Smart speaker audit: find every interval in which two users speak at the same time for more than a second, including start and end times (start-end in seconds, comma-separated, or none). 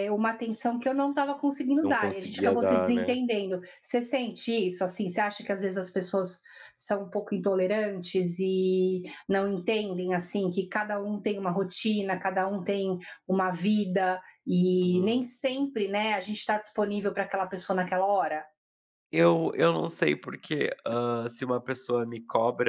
1.8-3.2